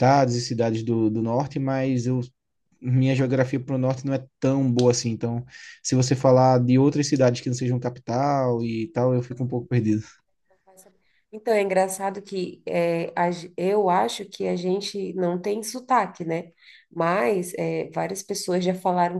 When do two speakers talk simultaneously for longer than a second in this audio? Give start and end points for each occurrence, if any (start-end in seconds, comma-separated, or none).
none